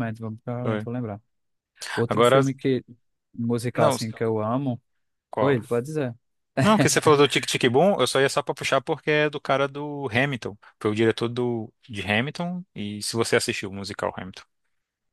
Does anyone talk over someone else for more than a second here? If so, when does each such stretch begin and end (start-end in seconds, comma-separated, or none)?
none